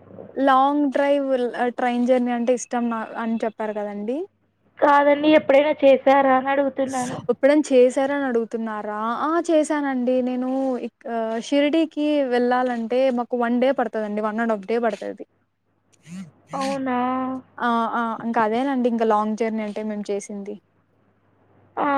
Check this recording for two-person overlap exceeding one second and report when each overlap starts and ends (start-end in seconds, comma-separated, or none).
none